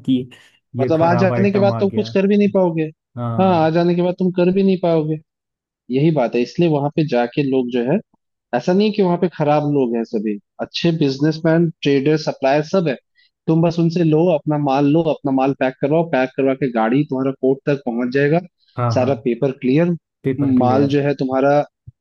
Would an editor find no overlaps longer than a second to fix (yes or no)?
no